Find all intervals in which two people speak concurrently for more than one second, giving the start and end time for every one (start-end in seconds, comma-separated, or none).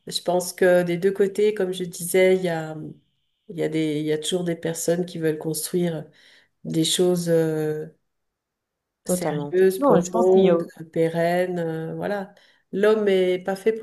9.1-10.6